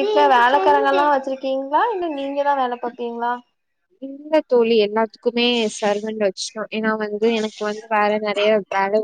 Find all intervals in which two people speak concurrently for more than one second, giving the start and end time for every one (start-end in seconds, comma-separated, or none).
none